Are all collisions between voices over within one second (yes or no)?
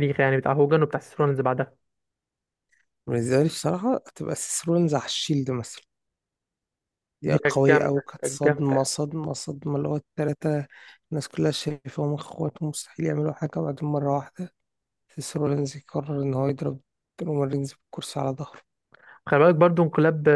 no